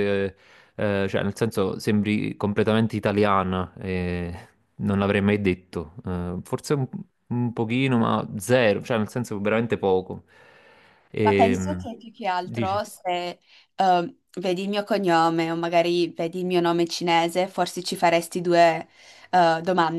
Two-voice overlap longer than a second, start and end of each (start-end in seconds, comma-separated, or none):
none